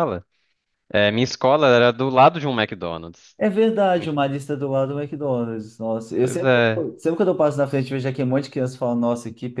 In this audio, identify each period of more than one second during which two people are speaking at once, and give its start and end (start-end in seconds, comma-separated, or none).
none